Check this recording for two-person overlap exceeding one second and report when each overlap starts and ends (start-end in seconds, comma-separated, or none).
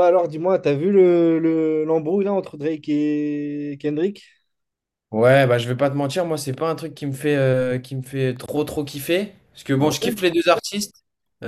none